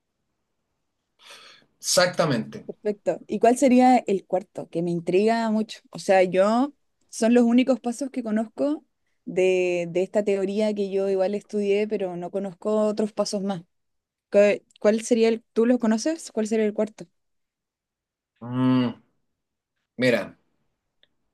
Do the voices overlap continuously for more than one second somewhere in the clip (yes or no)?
no